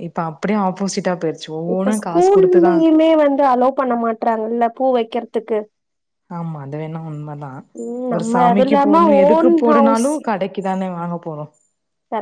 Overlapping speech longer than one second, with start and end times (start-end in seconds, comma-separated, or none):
8.1-10.1